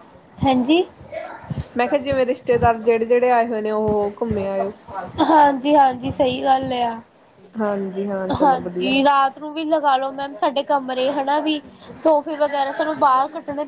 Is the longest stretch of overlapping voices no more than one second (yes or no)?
yes